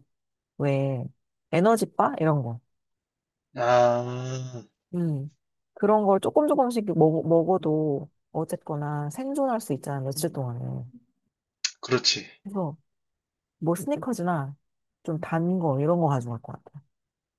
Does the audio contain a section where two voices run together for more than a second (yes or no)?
no